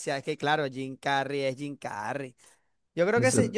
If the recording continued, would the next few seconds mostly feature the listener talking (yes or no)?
no